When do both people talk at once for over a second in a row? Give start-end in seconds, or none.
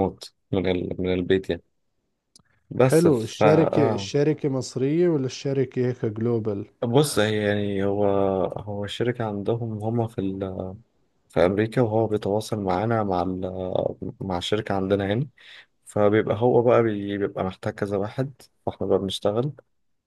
2.8-4.1